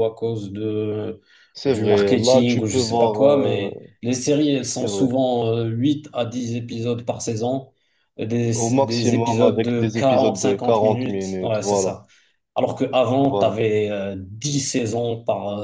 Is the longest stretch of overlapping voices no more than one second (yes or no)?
no